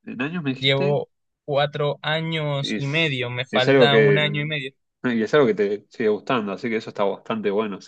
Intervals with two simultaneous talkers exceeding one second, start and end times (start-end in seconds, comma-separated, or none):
2.6-4.5